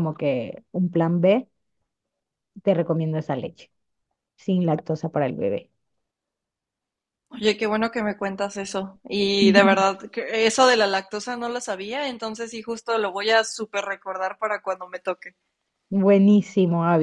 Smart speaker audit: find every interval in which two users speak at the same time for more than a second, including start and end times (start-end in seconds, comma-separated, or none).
none